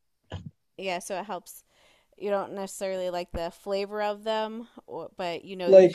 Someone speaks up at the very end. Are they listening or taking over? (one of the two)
taking over